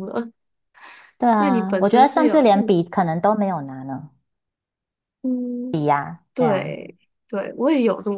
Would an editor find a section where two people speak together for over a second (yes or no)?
yes